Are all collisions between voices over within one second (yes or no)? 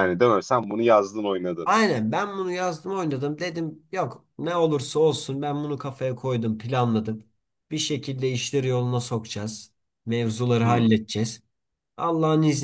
yes